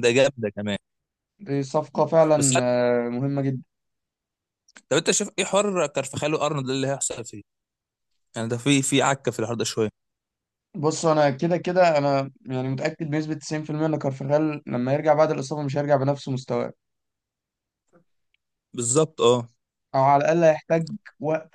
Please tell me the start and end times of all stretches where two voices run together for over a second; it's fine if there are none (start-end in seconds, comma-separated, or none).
none